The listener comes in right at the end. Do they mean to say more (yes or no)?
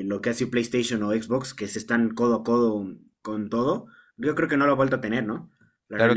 yes